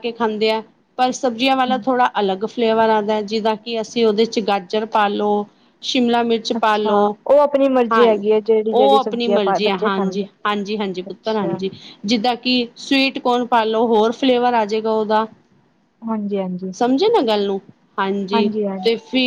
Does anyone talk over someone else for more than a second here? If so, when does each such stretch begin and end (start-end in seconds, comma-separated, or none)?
8.7-10.3